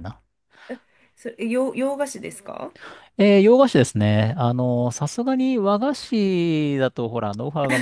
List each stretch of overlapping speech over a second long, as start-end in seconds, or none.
none